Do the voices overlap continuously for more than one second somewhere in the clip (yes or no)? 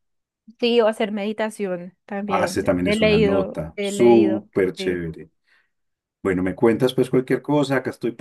yes